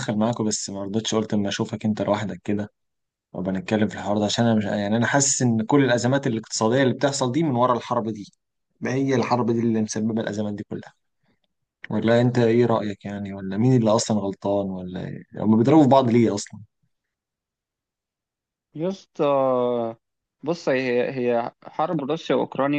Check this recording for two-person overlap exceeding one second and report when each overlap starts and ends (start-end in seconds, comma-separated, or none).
none